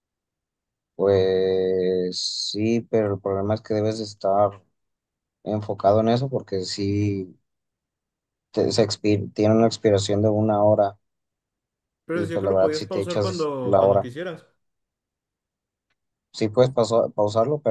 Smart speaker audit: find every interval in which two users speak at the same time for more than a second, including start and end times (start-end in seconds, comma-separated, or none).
12.1-14.1